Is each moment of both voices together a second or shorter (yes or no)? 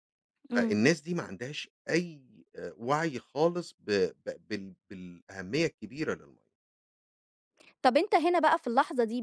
yes